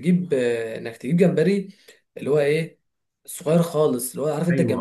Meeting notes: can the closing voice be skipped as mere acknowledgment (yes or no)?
no